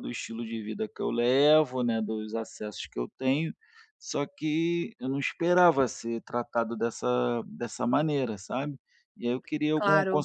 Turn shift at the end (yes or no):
no